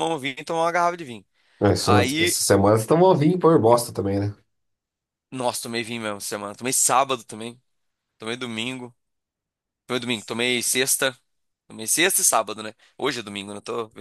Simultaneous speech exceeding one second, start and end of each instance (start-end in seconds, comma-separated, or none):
none